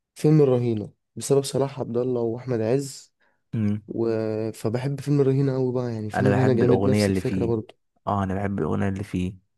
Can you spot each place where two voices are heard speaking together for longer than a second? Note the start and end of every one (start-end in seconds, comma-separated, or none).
6.1-7.5